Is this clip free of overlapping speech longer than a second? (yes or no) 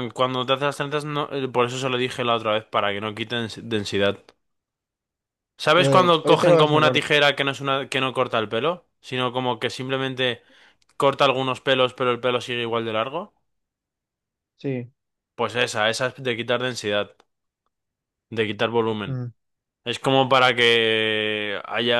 no